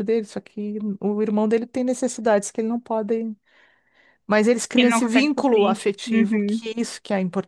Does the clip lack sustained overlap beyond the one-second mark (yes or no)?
no